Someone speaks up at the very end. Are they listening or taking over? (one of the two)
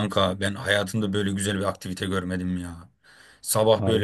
listening